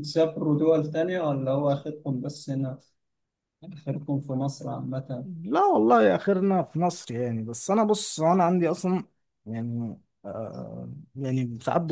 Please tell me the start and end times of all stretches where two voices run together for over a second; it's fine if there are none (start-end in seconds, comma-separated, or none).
none